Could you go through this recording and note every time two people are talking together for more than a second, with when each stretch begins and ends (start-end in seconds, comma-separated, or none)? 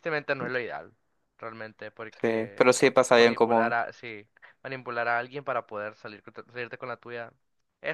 2.2-3.8